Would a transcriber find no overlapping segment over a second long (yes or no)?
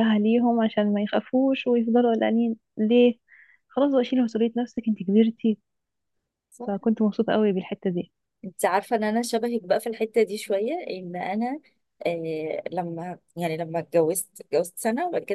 yes